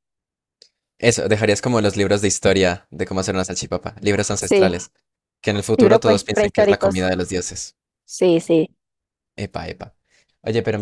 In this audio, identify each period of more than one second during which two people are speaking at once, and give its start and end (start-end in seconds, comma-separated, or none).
5.8-7.0